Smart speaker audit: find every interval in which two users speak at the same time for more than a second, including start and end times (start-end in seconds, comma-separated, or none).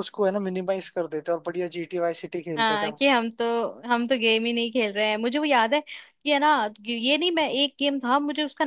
none